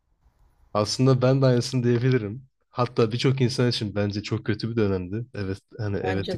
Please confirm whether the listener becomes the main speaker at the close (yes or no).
no